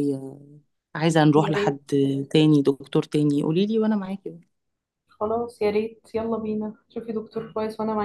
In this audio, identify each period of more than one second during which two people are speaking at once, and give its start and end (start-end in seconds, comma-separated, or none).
none